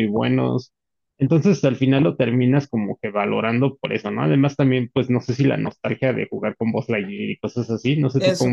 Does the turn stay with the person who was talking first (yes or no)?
no